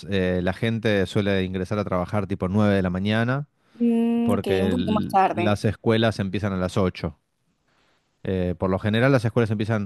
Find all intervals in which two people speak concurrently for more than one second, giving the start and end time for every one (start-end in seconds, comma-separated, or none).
4.2-5.6